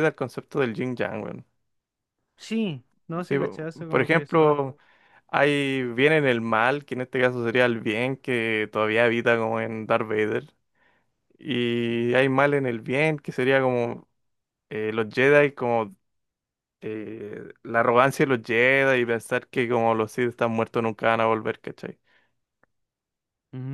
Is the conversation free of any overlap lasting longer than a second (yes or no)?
no